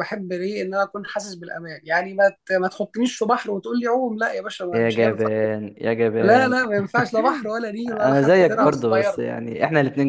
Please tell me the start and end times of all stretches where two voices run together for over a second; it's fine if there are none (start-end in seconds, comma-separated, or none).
7.9-9.2